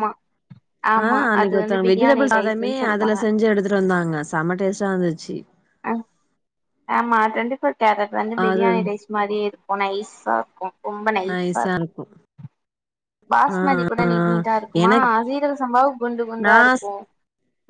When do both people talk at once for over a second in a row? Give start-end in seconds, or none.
1.0-3.2